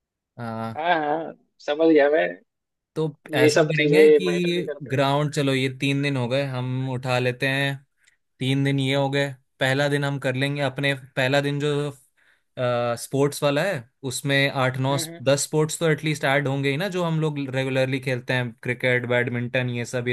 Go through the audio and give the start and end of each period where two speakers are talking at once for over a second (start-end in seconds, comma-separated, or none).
3.3-5.1